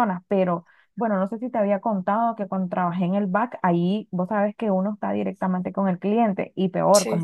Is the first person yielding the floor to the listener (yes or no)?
no